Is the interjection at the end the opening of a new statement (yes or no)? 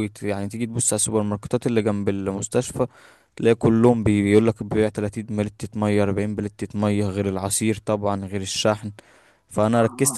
no